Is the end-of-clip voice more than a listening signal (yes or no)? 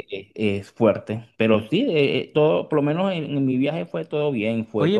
yes